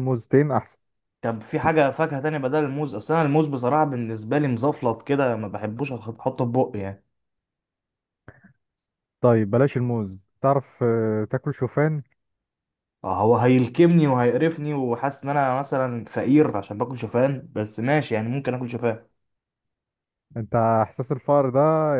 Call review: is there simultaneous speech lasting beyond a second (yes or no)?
no